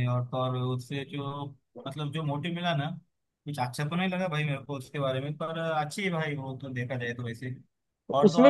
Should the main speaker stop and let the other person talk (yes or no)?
no